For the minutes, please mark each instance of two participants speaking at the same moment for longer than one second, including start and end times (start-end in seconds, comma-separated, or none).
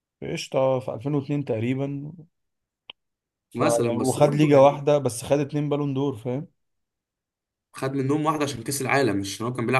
3.5-4.8